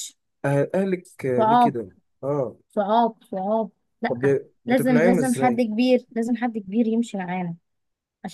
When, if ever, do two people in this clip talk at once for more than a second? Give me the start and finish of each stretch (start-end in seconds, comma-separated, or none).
4.1-5.7